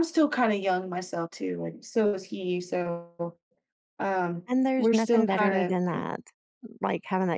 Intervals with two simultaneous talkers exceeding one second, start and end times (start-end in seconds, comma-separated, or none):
4.5-6.0